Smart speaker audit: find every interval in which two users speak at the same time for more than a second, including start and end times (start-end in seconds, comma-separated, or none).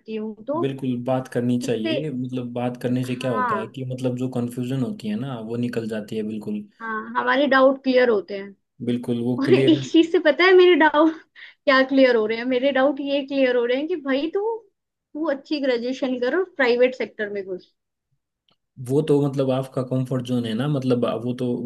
none